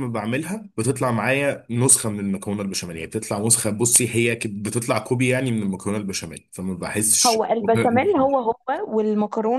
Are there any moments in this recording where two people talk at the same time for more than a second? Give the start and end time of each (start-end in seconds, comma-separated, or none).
none